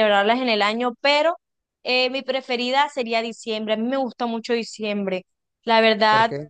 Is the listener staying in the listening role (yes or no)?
yes